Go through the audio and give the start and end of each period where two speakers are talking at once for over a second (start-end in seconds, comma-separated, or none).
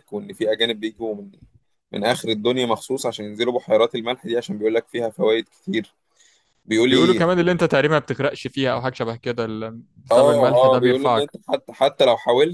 10.1-11.3